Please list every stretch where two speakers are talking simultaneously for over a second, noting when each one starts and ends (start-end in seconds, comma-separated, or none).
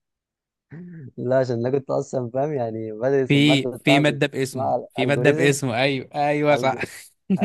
3.3-5.7